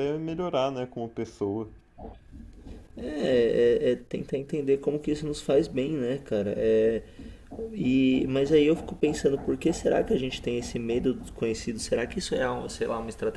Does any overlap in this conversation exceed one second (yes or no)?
no